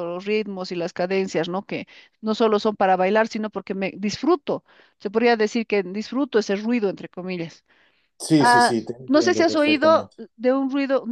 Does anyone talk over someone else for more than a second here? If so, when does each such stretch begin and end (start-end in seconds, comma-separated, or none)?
8.4-10.2